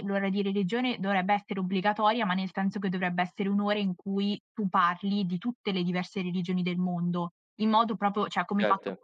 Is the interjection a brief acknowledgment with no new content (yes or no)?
yes